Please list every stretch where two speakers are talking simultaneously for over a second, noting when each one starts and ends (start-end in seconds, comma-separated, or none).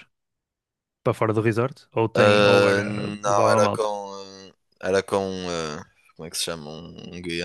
2.1-3.9